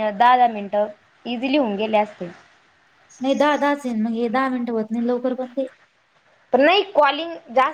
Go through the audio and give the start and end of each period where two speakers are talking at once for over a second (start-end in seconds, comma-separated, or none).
none